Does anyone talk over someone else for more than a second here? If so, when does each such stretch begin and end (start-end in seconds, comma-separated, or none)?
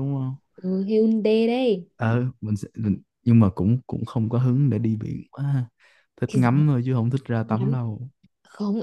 none